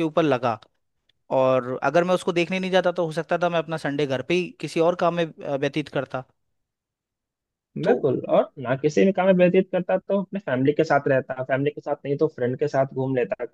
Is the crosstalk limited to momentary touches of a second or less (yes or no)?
yes